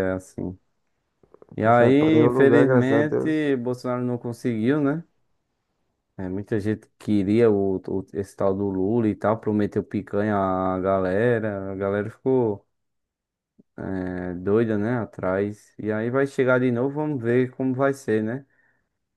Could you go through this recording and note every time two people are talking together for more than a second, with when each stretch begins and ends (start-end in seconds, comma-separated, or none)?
1.6-3.4